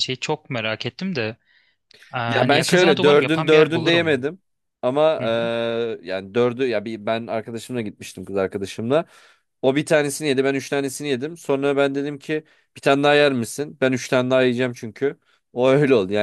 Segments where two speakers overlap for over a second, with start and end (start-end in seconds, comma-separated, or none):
2.3-4.3